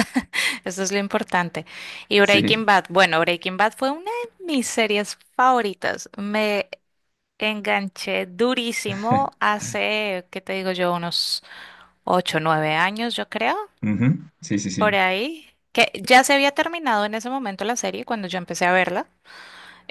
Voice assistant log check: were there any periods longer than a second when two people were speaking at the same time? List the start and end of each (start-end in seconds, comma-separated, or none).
none